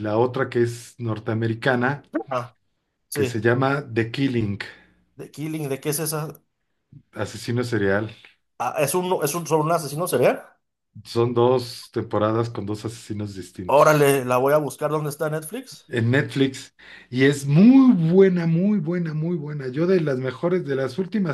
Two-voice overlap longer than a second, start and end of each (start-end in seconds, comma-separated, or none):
none